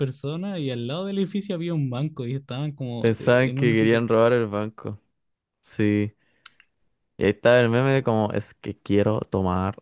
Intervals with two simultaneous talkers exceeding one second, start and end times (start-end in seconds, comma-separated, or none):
3.0-4.2